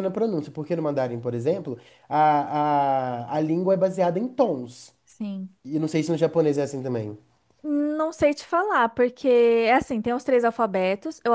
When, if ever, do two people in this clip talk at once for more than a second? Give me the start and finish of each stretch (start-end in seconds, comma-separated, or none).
none